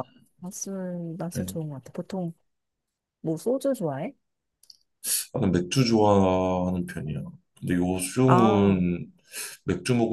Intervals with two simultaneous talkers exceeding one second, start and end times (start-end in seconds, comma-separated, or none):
none